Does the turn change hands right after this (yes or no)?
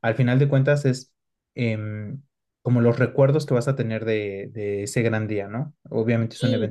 no